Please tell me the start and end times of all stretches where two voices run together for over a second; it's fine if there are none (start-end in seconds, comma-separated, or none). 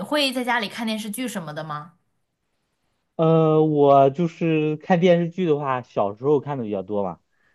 none